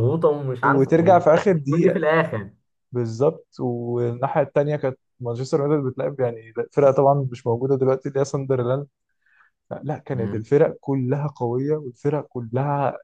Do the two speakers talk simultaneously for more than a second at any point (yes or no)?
yes